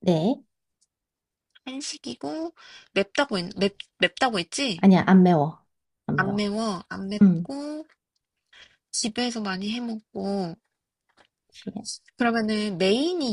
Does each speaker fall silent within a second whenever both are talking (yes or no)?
yes